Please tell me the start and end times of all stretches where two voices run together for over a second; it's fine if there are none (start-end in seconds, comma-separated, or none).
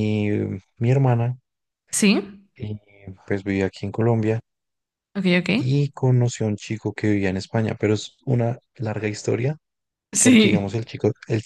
none